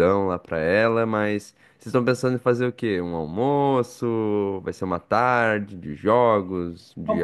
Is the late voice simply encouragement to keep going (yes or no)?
no